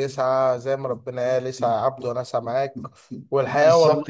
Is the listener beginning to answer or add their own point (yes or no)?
no